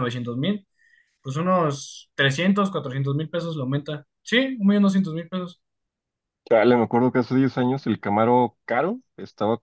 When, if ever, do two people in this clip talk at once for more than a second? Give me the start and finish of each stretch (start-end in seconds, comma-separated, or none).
none